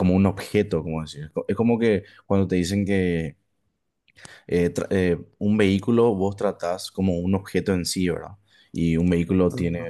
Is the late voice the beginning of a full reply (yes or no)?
no